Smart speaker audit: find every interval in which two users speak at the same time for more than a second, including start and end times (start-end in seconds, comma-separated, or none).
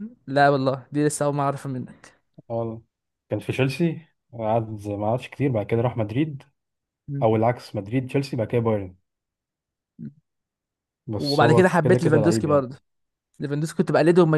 11.2-12.6